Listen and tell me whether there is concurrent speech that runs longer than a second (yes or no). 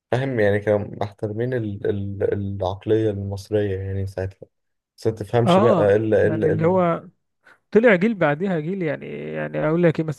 yes